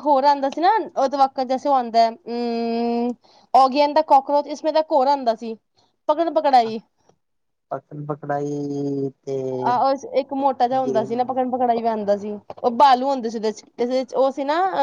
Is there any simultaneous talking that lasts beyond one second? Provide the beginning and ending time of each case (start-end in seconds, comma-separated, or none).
none